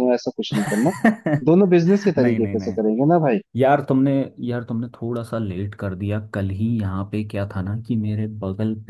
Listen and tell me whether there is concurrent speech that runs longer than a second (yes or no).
no